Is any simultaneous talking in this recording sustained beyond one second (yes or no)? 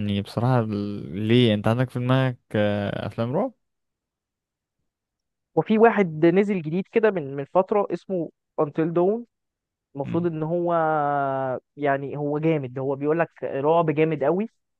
no